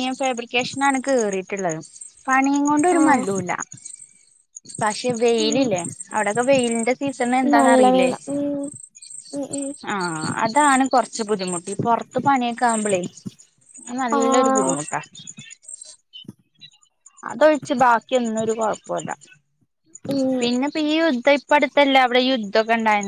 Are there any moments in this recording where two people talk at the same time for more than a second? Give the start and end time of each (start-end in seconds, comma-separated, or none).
none